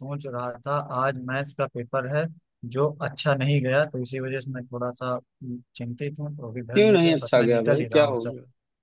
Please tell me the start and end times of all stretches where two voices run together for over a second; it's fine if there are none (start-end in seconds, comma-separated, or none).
6.7-8.2